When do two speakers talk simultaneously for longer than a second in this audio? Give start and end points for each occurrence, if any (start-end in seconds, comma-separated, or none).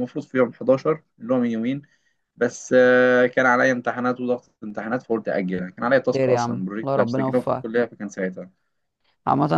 6.1-7.7